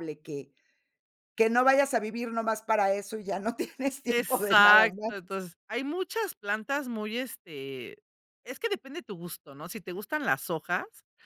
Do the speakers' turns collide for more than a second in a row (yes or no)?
yes